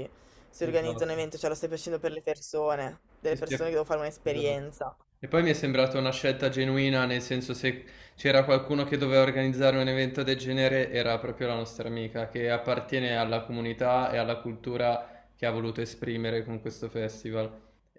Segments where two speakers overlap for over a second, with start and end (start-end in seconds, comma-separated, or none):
none